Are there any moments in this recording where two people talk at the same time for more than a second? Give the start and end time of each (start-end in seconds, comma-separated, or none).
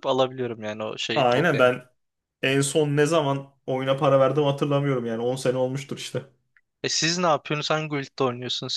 none